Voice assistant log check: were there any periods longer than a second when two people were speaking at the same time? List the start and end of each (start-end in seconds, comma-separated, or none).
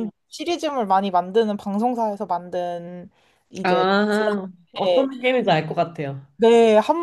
3.6-5.1